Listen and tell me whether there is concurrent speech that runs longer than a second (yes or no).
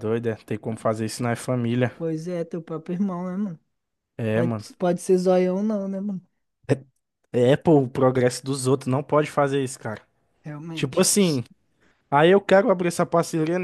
no